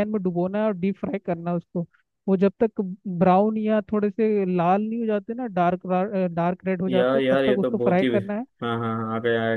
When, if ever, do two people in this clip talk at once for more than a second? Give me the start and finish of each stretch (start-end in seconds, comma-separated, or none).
6.9-8.1